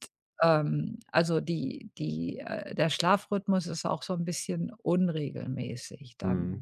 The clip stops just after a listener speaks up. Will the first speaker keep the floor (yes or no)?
no